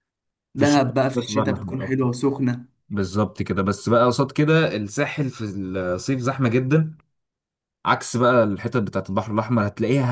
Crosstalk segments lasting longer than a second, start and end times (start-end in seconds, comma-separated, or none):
0.6-2.1